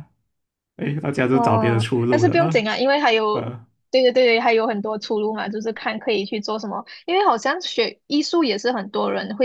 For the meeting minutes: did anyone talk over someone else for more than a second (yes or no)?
yes